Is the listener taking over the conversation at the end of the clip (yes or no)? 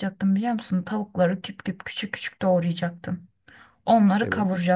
no